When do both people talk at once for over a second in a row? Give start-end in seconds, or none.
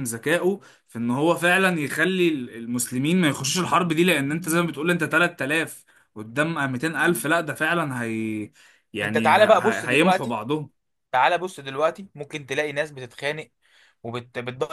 9.0-10.4